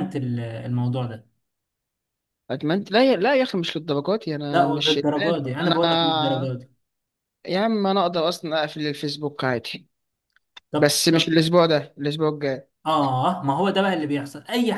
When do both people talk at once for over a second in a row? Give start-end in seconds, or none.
4.5-5.8